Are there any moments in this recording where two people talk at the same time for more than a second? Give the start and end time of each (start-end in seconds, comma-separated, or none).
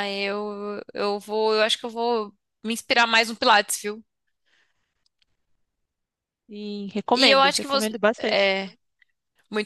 7.1-8.6